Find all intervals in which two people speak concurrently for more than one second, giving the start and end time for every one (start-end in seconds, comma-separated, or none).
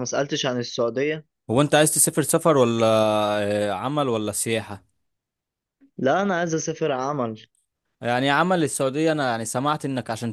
none